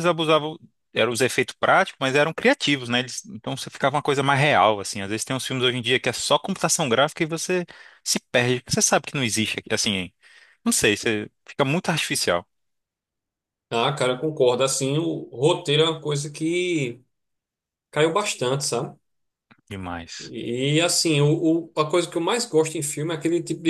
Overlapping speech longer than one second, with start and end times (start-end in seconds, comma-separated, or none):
none